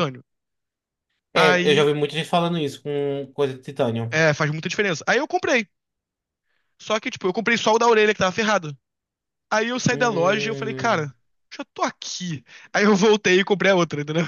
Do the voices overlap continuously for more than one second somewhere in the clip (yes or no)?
yes